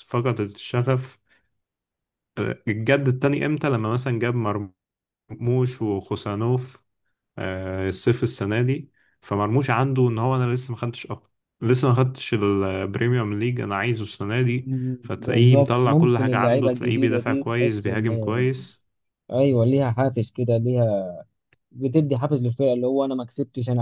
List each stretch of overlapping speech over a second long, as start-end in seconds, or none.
14.6-18.1